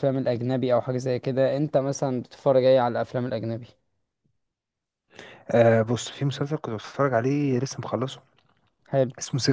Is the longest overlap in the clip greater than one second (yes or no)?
no